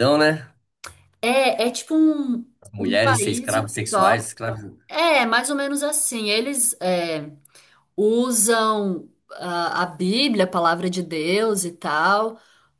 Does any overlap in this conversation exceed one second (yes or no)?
yes